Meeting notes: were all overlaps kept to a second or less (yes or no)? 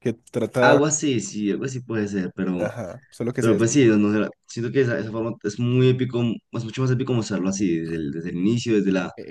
yes